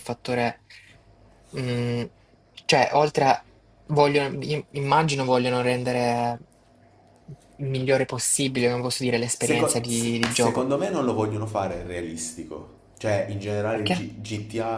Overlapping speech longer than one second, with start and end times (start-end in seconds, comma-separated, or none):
9.4-10.7